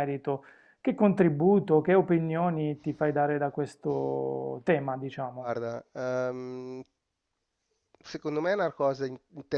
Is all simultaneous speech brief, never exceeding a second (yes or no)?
yes